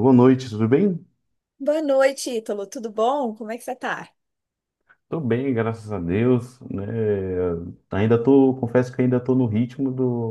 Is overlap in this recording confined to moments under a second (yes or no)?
yes